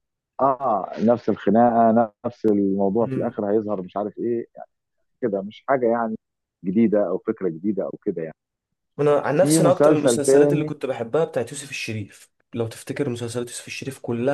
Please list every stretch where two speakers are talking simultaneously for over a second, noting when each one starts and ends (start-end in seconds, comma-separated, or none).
9.4-10.7